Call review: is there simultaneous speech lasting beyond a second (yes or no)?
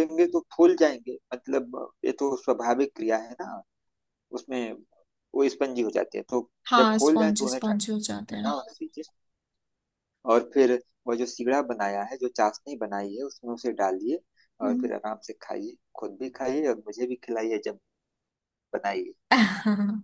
yes